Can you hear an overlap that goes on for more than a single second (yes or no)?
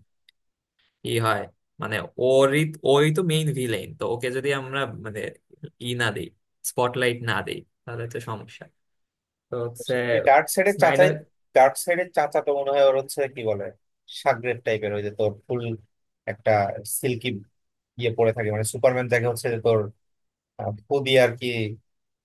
no